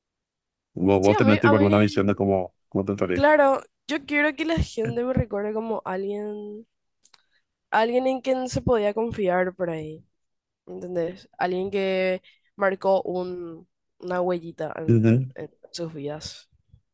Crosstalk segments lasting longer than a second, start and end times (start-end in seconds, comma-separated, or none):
1.0-2.2